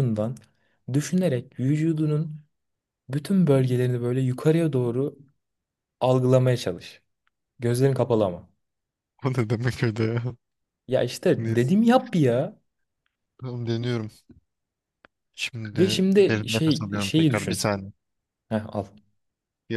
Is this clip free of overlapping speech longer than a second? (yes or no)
no